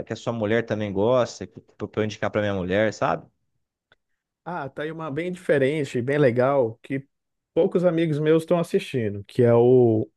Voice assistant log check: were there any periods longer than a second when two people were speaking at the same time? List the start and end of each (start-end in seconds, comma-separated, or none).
none